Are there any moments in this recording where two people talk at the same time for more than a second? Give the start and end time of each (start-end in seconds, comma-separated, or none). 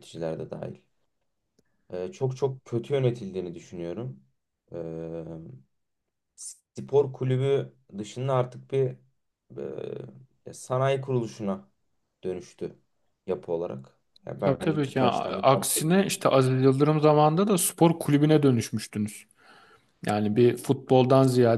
14.4-15.9